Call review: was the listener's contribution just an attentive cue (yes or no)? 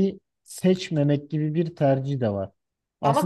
yes